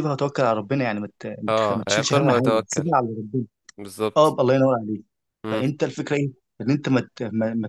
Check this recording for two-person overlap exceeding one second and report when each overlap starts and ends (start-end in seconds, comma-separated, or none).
1.5-2.9